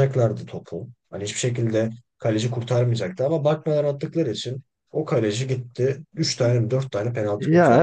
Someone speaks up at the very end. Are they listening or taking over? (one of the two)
taking over